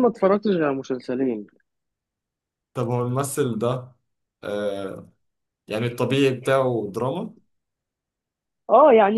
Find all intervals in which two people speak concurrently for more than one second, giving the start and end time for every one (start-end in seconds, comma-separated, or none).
none